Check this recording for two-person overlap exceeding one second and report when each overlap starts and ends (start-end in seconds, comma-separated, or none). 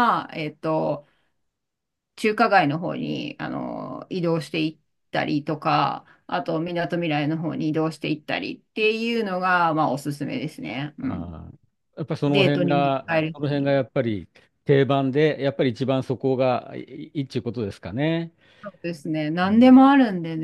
12.3-13.8